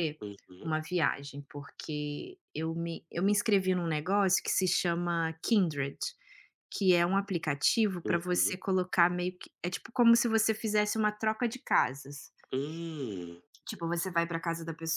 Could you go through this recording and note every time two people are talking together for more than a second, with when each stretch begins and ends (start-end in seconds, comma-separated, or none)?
none